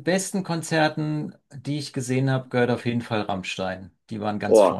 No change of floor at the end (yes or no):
no